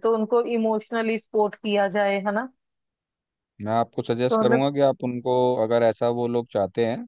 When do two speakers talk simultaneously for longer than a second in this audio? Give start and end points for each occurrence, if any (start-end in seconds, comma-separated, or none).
none